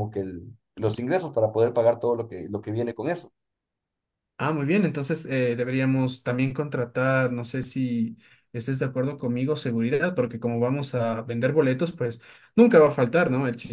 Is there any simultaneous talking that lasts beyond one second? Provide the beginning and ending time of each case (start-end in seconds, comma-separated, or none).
none